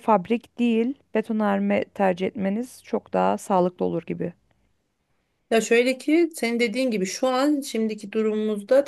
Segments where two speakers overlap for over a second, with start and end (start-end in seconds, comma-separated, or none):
none